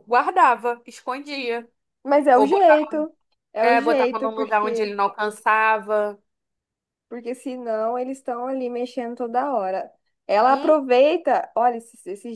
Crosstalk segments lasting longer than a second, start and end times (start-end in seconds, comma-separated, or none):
3.6-4.9